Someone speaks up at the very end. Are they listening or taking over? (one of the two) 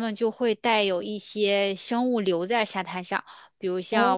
listening